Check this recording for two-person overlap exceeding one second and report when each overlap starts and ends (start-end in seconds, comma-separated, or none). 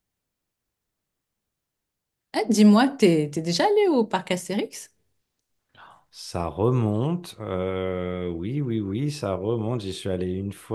none